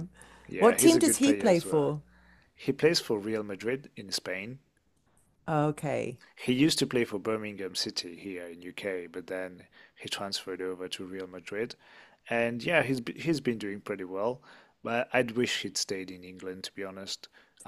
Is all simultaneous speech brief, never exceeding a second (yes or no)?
no